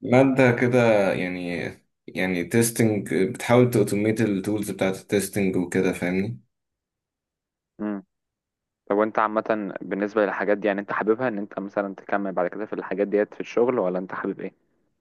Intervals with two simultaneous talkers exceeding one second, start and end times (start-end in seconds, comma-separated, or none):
none